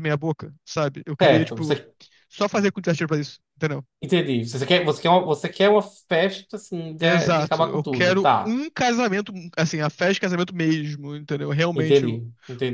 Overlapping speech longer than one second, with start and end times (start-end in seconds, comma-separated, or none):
7.0-8.6